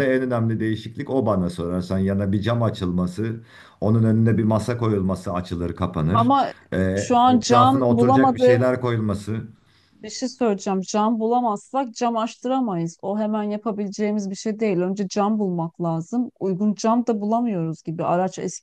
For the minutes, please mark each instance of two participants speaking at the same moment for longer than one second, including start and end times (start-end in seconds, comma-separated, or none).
7.3-8.6